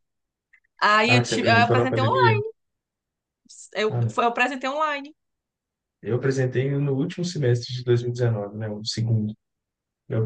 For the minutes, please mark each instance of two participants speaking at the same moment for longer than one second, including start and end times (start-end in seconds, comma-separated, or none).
1.1-2.4